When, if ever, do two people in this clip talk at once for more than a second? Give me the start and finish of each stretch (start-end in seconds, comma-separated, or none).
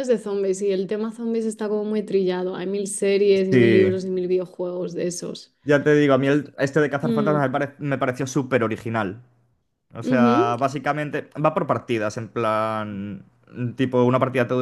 none